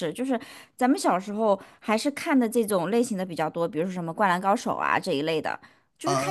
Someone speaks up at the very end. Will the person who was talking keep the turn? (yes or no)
no